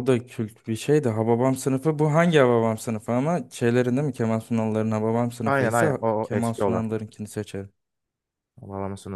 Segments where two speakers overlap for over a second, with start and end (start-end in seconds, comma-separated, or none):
5.4-6.8